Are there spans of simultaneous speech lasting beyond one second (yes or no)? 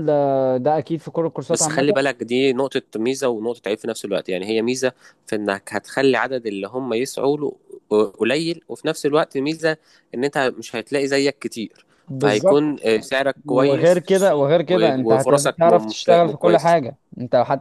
yes